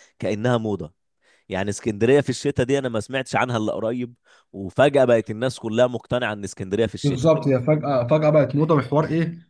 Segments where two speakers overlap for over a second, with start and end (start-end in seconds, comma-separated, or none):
none